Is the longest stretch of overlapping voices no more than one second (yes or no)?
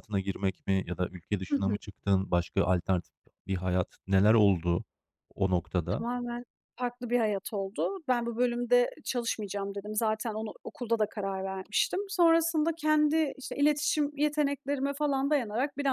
yes